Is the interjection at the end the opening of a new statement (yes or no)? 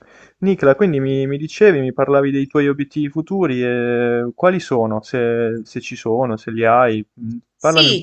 yes